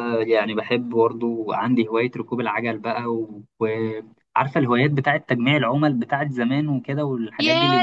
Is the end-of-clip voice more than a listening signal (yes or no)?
yes